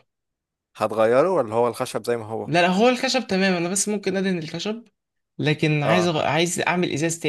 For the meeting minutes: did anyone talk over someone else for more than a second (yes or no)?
no